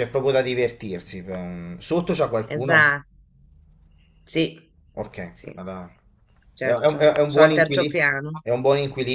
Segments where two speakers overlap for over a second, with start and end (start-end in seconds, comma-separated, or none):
6.6-8.0